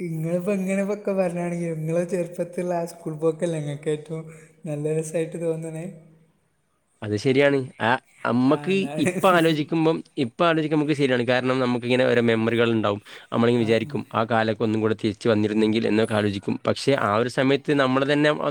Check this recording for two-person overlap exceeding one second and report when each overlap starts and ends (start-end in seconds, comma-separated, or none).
none